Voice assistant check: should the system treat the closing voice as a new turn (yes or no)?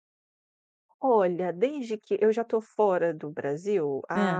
no